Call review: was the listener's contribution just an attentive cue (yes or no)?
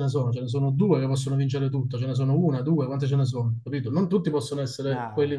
yes